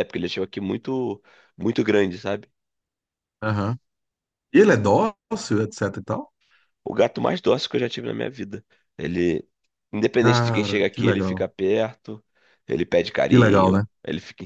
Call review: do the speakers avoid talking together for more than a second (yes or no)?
no